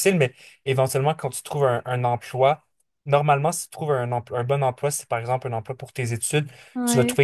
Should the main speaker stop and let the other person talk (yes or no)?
no